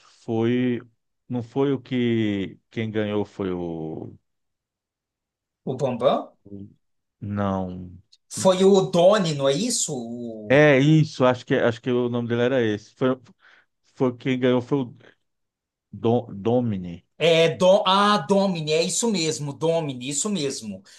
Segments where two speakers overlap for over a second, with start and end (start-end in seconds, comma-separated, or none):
none